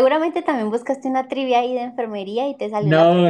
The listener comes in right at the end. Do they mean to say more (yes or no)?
yes